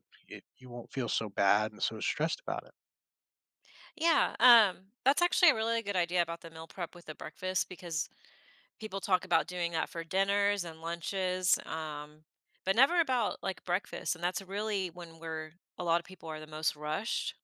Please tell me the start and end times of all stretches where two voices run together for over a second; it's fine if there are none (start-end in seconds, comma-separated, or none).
none